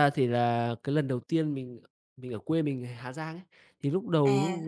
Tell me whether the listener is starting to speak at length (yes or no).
no